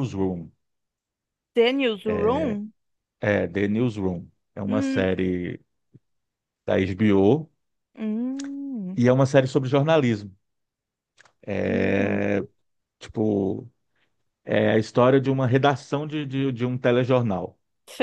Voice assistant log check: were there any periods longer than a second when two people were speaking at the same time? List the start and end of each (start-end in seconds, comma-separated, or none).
none